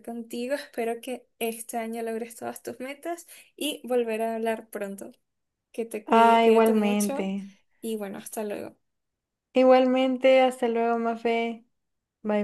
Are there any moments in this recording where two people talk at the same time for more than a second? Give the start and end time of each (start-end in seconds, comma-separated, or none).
6.1-7.3